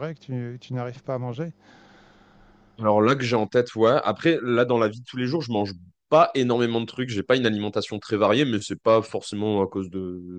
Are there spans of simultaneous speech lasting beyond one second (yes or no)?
no